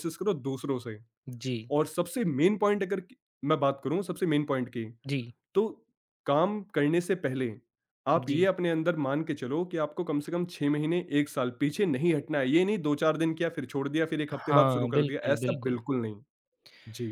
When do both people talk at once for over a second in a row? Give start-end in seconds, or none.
14.4-15.8